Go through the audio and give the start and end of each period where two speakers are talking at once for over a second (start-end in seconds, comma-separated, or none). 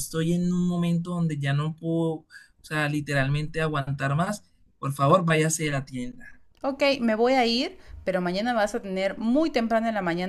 none